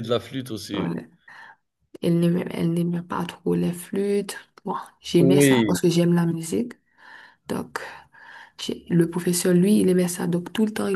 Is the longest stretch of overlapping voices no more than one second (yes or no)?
yes